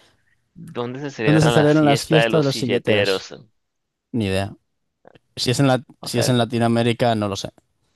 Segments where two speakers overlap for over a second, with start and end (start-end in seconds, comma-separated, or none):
1.2-3.2